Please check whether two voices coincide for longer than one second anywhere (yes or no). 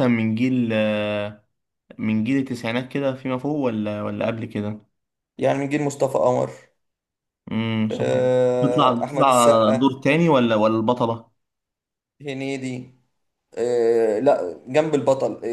yes